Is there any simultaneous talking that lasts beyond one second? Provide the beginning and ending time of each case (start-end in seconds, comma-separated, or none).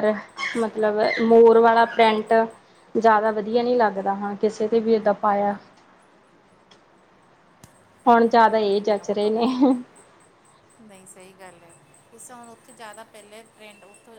8.1-9.5